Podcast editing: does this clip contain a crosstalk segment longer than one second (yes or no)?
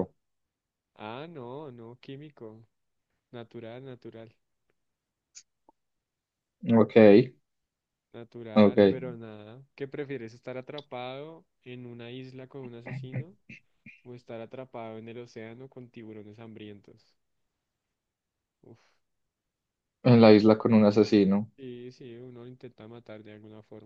no